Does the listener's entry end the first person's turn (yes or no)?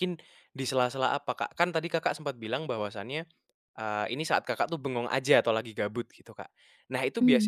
no